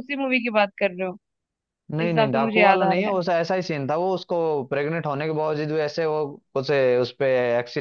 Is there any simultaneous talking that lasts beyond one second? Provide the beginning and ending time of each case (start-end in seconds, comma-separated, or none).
2.0-3.2